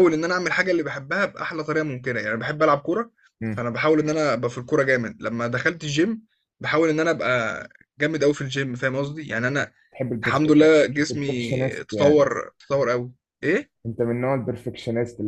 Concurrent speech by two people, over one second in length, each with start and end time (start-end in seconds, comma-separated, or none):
10.2-12.2